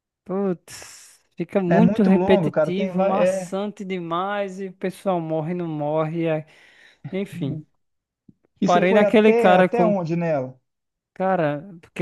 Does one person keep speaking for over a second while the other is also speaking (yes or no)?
yes